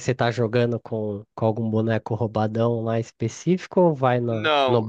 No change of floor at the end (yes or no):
no